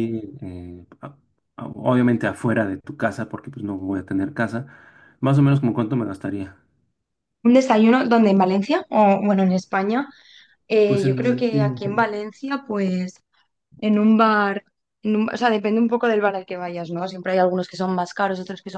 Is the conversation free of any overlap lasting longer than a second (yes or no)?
no